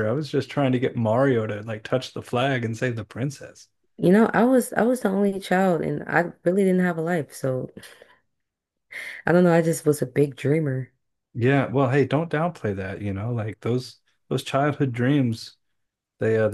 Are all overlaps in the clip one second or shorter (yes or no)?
yes